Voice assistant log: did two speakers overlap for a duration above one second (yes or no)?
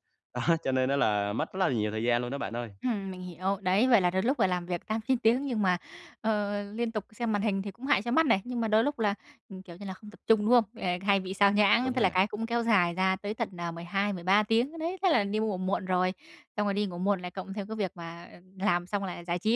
no